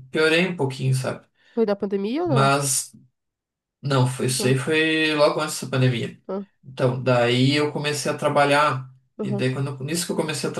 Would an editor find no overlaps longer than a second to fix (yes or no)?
yes